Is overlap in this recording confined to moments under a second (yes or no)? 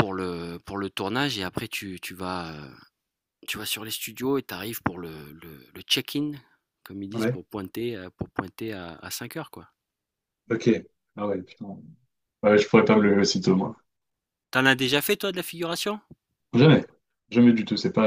yes